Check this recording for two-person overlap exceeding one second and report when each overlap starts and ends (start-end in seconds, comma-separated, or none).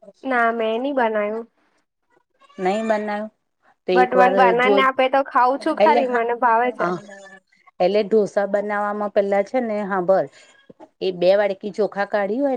4.0-6.2